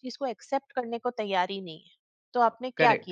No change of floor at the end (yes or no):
no